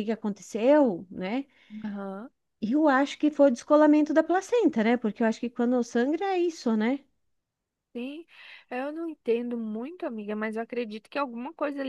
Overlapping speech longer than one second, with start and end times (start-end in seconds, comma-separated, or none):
none